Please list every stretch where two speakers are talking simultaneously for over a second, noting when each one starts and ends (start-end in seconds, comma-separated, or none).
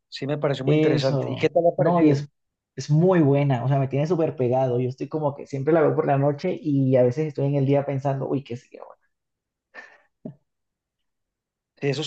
0.7-2.2